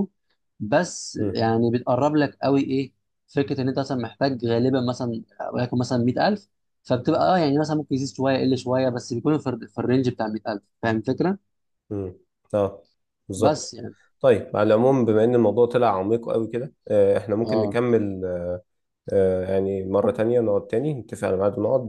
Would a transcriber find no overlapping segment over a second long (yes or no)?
yes